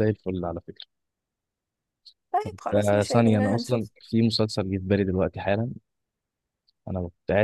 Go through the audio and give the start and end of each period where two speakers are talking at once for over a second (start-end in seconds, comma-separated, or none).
2.4-3.9